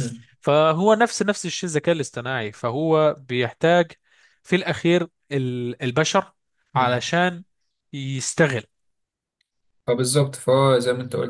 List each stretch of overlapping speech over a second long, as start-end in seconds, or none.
none